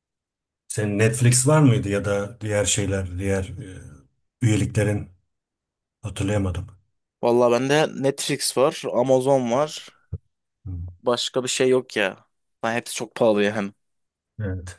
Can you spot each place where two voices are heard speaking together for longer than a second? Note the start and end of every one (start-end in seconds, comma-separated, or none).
none